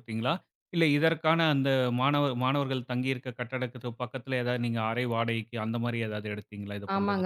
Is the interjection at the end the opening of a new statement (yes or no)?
yes